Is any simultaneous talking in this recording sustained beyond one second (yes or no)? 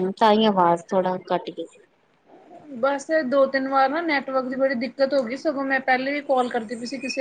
no